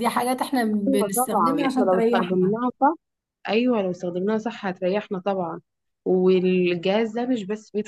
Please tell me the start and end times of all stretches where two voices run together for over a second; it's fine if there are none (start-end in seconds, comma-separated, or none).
1.1-2.5